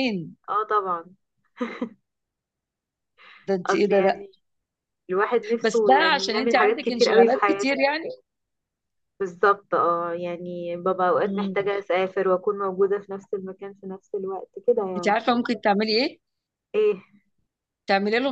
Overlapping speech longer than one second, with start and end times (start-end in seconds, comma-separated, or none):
5.6-7.8